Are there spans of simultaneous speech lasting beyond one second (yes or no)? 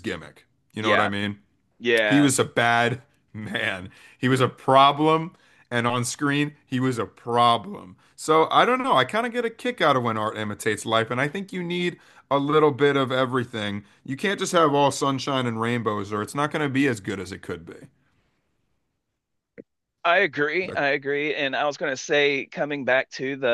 no